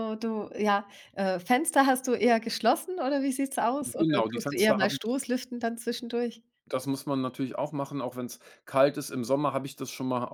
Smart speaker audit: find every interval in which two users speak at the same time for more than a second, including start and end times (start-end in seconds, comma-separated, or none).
4.0-5.2